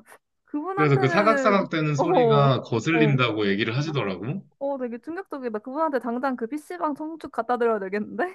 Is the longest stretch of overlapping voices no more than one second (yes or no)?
no